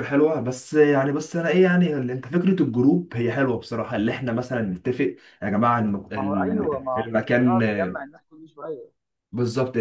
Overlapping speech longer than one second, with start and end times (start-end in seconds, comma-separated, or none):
6.1-7.6